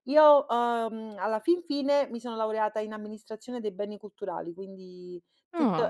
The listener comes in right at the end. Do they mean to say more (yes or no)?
no